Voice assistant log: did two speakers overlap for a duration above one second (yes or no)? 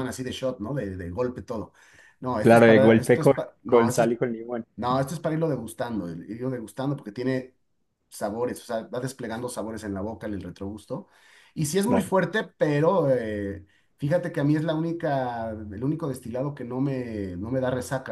yes